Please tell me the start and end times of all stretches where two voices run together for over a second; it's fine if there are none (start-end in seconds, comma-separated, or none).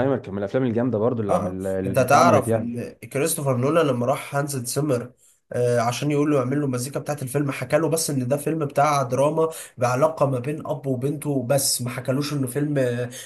1.3-2.7